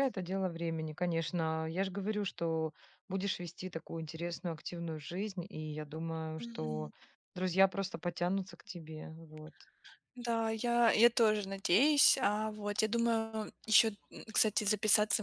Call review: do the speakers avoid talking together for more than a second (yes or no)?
yes